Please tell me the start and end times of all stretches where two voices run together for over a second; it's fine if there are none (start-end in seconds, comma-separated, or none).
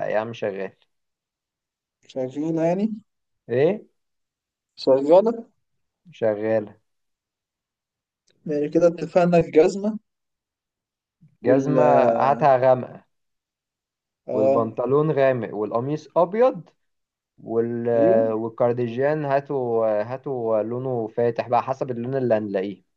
none